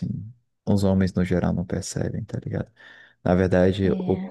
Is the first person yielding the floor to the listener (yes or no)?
no